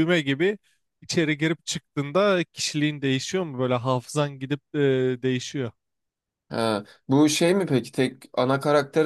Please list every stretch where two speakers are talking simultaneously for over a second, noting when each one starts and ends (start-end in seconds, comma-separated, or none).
none